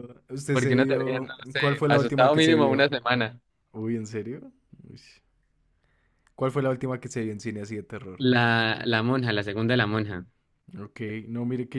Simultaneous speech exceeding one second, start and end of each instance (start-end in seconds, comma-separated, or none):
0.5-2.9